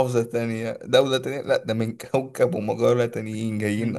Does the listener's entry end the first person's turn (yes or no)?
yes